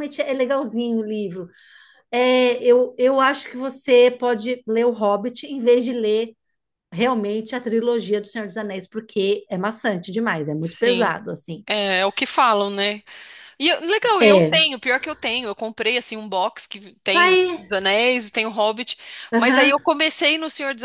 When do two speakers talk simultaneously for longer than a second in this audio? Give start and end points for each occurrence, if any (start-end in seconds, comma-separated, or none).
none